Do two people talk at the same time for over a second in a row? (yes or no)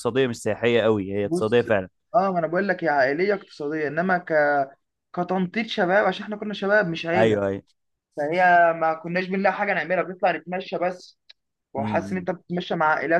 no